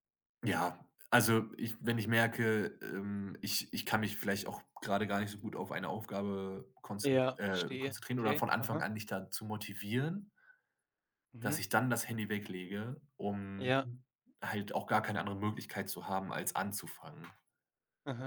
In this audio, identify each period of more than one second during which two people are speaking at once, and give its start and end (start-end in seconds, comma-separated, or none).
7.0-8.9